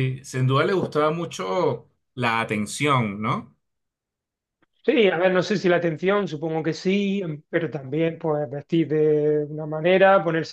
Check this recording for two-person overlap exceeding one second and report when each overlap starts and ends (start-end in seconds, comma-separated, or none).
none